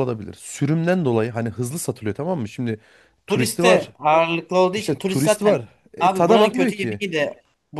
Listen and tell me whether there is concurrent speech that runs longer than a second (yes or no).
yes